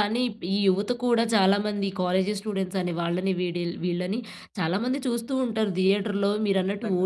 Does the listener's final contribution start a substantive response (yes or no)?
yes